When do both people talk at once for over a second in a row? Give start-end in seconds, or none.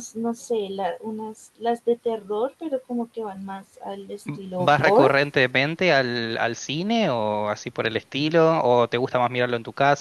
none